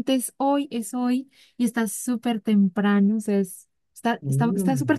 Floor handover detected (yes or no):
no